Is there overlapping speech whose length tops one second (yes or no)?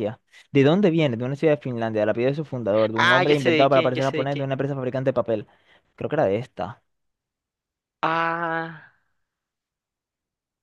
yes